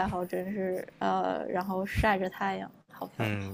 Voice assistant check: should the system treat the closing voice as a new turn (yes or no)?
yes